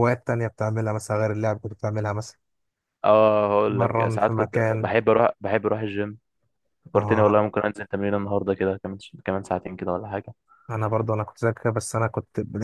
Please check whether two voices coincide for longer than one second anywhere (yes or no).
yes